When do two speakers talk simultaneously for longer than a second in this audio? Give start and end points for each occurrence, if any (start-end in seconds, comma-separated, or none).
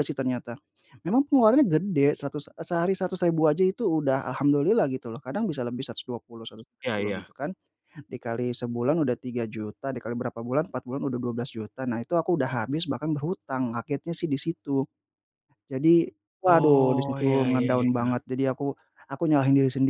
16.5-18.1